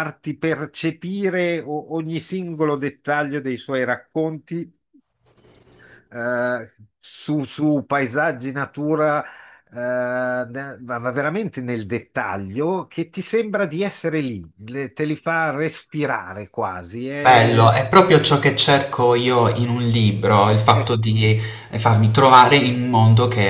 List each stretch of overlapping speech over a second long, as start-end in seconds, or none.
none